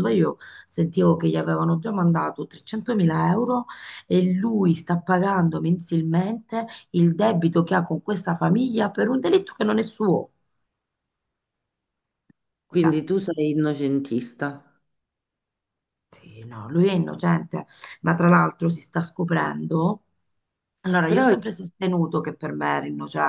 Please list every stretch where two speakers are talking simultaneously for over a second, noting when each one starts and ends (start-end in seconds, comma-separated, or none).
none